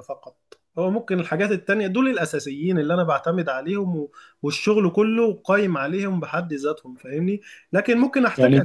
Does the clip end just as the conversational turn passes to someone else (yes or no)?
no